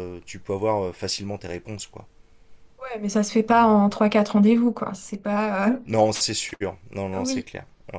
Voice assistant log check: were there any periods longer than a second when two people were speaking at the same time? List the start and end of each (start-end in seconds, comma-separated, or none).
none